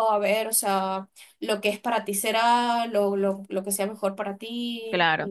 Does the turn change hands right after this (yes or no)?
yes